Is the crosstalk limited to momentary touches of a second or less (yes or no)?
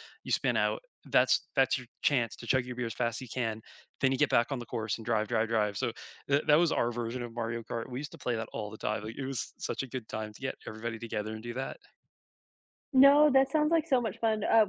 yes